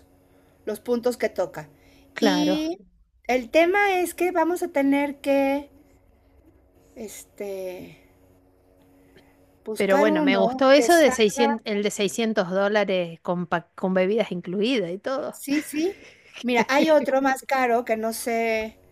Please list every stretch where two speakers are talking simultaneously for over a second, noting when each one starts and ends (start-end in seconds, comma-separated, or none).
9.8-11.6